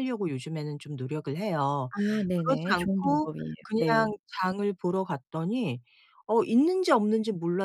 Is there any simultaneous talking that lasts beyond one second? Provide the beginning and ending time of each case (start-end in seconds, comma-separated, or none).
2.4-4.1